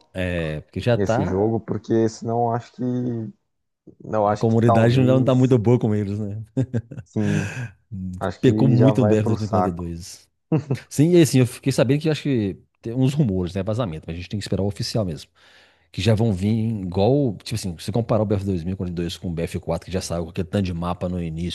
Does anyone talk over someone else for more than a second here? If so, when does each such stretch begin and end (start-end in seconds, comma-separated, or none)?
4.2-5.6, 8.4-9.9